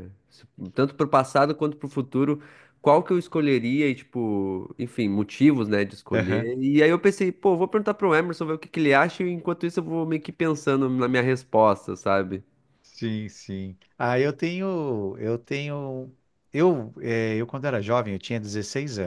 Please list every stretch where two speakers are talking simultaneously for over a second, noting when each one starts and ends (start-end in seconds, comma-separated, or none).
none